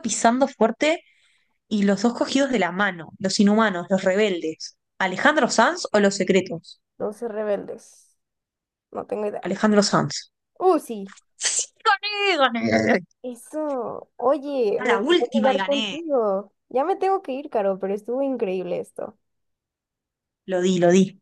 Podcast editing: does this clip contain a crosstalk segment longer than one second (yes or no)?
yes